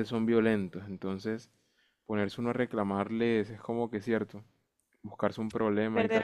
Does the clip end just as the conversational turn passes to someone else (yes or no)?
yes